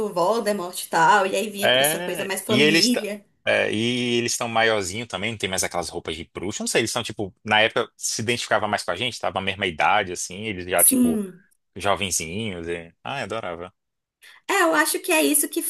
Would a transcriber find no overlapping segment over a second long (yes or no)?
no